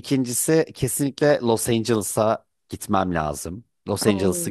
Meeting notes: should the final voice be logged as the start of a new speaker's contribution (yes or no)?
yes